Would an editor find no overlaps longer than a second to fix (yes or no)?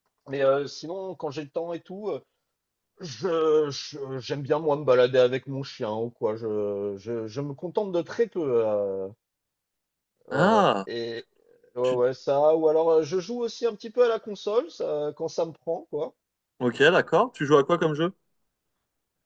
yes